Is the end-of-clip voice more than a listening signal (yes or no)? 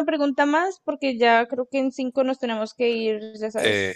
yes